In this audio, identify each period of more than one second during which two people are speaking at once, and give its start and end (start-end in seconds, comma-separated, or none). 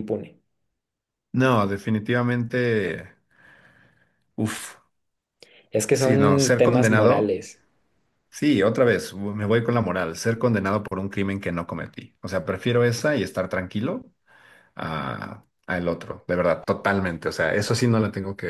5.9-7.3